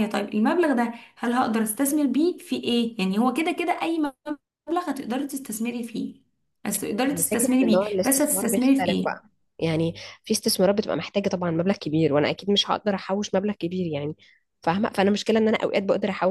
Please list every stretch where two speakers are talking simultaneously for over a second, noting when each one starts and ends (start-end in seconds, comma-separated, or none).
7.1-9.2